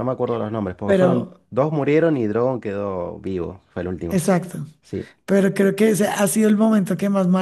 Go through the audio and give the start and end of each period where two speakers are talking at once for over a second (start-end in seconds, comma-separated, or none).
none